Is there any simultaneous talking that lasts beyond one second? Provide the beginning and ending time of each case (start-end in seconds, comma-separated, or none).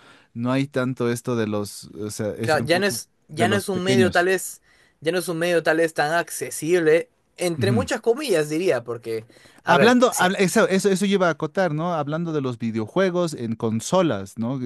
2.4-4.3